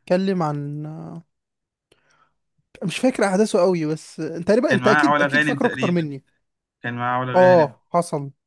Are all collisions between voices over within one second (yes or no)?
no